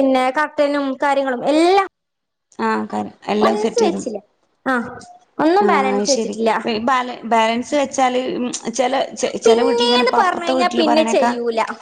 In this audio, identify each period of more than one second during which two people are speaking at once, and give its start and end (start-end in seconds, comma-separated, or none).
9.5-11.3